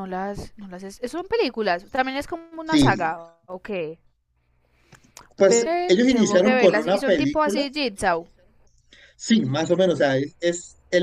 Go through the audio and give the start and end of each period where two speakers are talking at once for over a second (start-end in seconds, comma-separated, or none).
5.4-7.6